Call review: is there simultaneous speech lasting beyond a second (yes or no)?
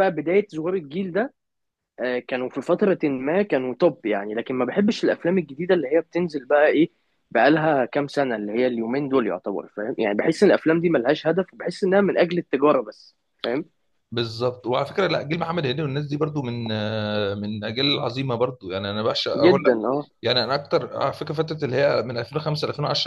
no